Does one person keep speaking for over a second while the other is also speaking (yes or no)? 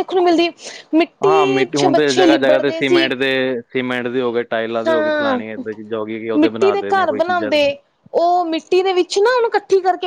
yes